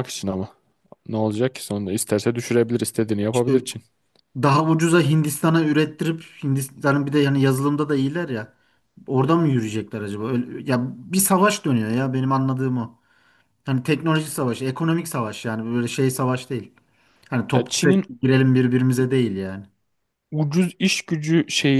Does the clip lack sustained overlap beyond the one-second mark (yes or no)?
yes